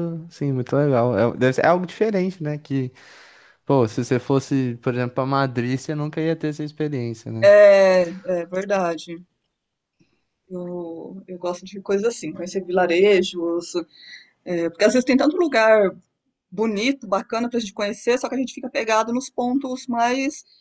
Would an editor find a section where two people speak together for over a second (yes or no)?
no